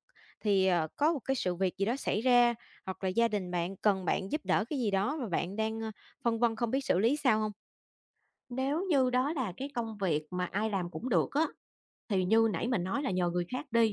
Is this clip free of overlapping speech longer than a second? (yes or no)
yes